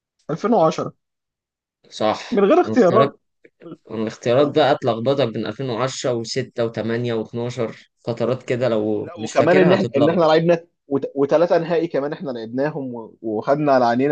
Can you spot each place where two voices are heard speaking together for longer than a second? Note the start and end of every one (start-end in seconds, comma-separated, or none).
9.0-10.3